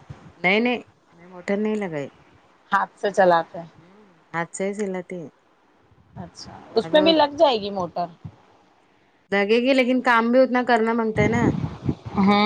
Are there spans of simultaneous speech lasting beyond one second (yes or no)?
no